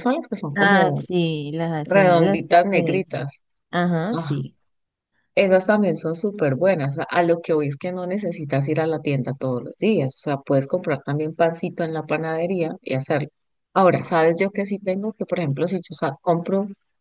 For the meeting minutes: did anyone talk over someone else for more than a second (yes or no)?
yes